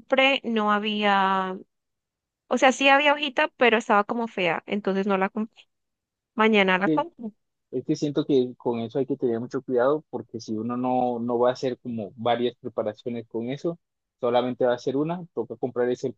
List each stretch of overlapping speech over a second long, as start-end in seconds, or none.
none